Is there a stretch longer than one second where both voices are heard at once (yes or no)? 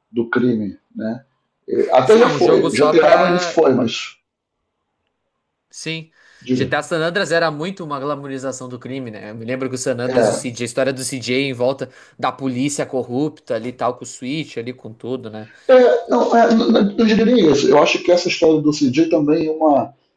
yes